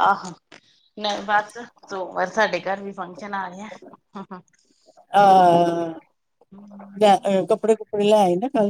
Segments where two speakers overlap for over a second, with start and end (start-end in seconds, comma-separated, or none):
none